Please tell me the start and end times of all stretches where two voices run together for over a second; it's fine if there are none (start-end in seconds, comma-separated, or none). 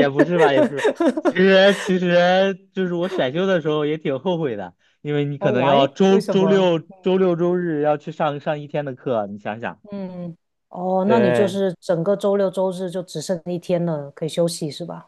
5.4-6.7